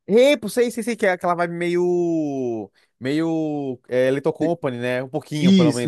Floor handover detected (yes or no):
yes